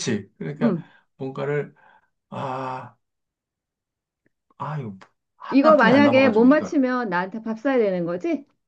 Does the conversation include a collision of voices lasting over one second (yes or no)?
yes